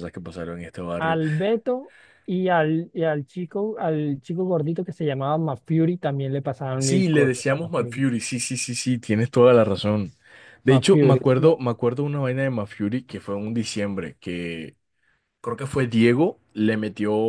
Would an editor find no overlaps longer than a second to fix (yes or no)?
no